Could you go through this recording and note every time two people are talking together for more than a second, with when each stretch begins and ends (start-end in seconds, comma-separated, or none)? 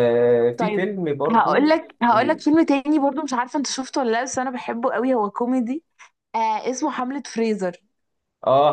0.6-2.4